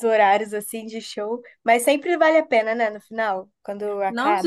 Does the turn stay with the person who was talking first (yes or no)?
no